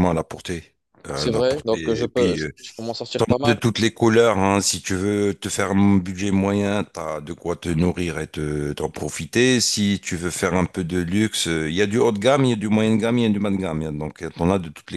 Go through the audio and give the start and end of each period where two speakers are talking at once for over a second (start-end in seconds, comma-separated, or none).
1.1-2.5